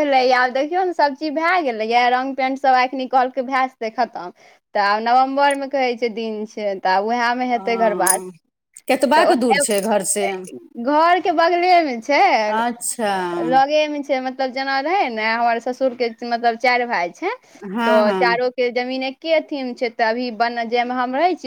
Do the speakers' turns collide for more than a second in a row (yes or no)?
no